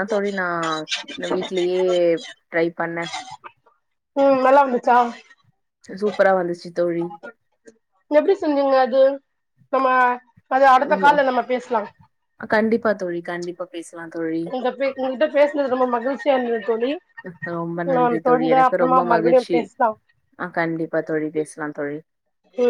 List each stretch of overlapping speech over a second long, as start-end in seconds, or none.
18.0-19.6